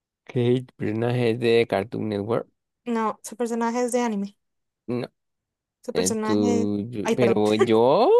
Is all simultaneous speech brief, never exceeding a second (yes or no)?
no